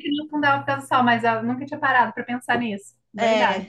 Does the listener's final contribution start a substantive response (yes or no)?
yes